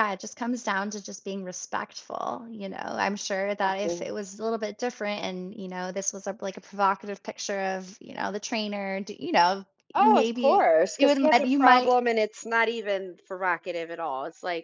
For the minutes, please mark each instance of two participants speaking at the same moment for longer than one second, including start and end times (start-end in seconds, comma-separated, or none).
9.9-11.9